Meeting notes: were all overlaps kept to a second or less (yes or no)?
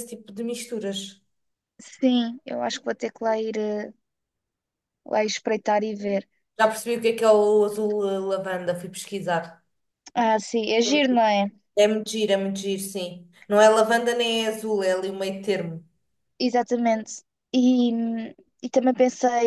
yes